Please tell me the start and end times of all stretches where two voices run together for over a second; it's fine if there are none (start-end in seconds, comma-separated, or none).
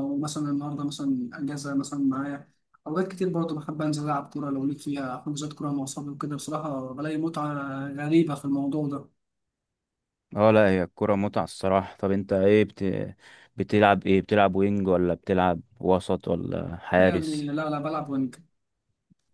none